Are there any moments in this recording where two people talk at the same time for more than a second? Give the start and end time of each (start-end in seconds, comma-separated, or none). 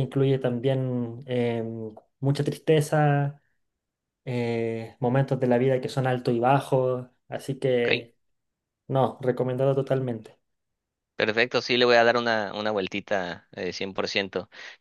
none